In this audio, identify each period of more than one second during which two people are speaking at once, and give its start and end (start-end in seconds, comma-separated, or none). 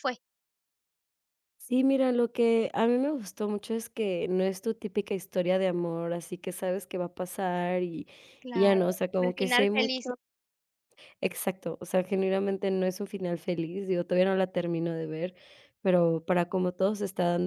8.5-10.1